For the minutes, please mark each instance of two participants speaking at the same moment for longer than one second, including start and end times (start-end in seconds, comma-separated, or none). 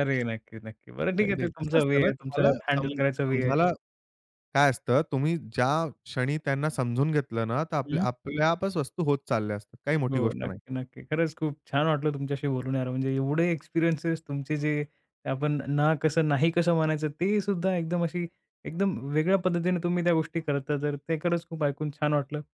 1.2-3.5